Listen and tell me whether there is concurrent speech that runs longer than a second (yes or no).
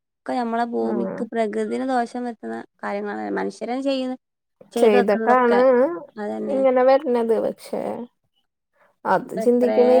no